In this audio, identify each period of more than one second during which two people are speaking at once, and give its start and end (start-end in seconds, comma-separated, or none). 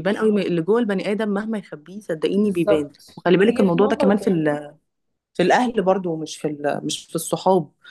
2.4-4.4